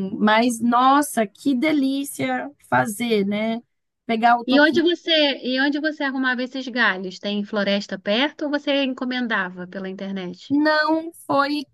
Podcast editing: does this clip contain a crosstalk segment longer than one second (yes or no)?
no